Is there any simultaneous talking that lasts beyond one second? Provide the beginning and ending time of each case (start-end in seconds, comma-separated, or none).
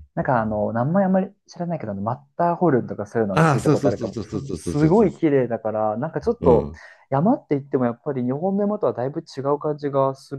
3.3-5.1